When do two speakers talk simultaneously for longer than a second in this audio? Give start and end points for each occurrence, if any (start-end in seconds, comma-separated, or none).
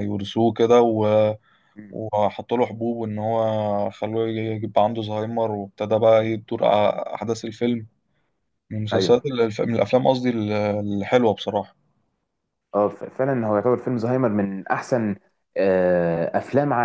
none